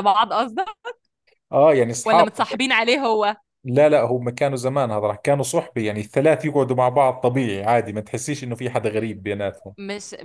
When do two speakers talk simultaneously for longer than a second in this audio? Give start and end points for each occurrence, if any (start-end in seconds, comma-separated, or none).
none